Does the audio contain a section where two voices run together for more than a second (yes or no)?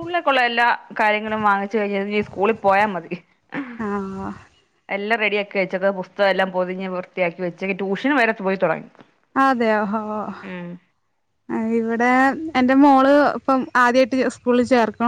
no